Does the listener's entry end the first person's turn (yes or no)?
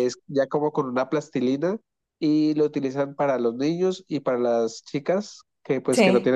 no